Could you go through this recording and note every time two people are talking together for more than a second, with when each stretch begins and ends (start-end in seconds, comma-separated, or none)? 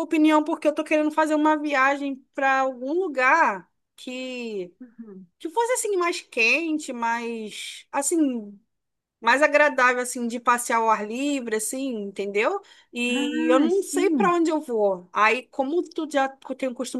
13.2-14.4